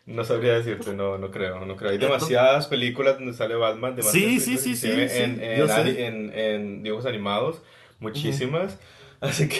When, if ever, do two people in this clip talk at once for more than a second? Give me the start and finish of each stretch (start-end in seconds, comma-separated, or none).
4.0-6.0